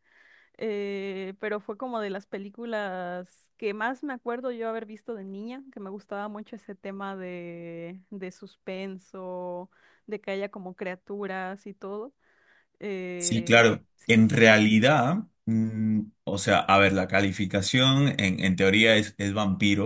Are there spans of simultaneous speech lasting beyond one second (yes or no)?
yes